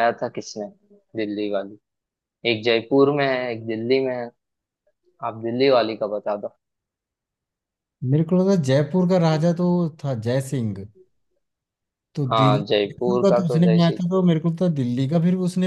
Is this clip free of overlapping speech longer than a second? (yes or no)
no